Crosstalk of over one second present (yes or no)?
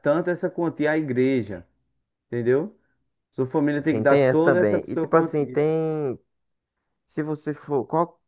yes